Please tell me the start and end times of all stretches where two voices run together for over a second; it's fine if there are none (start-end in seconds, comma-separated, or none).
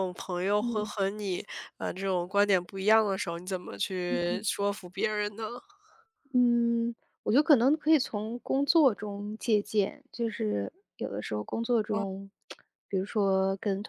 none